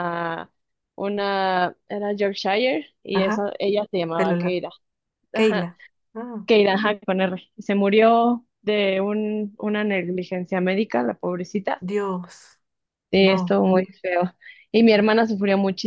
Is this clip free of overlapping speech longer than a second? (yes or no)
yes